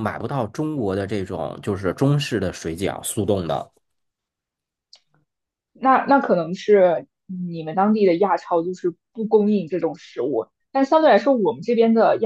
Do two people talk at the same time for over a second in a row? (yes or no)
no